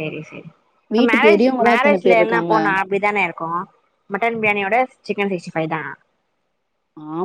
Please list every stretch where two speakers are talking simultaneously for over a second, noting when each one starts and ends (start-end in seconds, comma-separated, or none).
1.0-2.5